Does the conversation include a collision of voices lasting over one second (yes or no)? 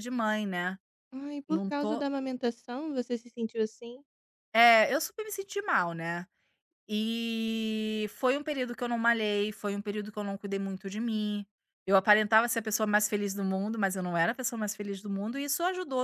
no